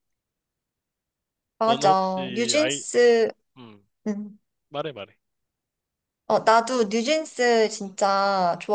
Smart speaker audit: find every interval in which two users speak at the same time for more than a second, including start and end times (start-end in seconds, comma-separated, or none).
1.6-2.8